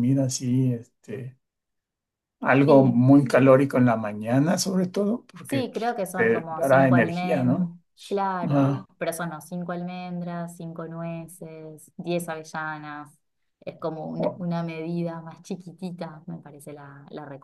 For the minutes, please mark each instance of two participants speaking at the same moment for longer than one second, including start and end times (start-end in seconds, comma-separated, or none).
5.4-7.7